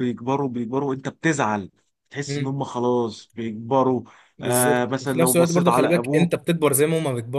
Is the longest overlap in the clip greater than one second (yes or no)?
yes